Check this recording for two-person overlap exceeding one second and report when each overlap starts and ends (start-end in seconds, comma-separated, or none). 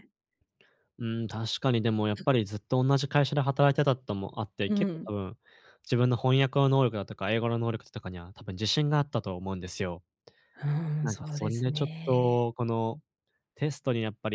11.0-12.5